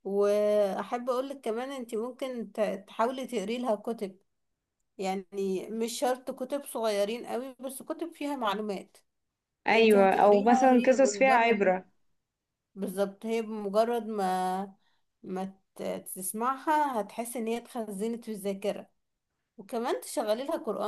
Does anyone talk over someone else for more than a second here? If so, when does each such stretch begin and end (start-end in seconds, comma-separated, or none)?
9.7-11.8